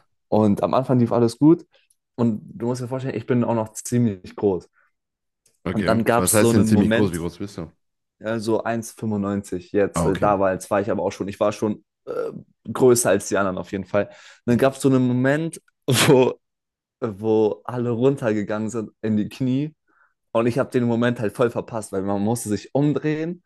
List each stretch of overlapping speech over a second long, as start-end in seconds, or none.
5.7-7.2